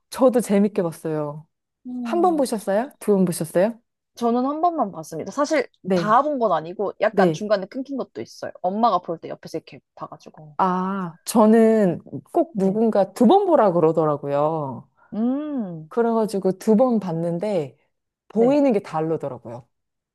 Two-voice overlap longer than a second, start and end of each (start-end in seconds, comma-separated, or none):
none